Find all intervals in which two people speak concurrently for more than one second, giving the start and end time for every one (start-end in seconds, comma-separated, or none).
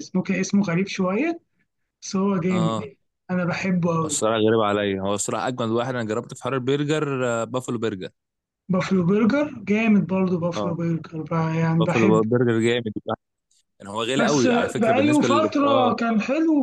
14.2-15.9